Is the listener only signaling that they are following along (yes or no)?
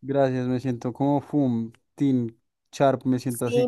no